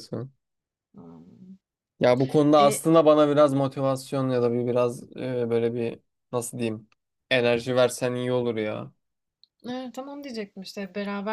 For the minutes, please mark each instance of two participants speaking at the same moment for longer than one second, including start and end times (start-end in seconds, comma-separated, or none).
none